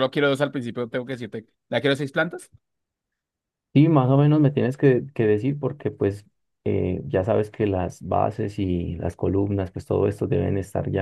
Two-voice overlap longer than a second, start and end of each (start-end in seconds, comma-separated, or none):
none